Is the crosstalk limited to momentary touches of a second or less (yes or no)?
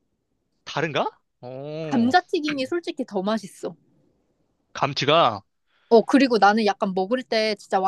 yes